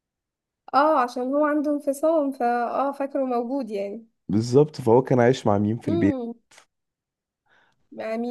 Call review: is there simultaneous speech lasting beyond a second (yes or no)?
no